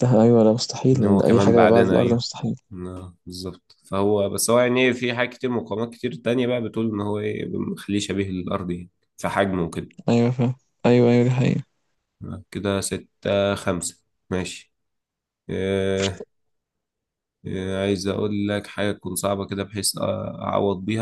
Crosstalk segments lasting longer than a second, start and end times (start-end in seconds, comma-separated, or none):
0.9-2.2